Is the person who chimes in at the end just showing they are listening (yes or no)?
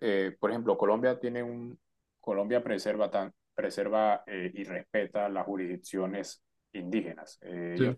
yes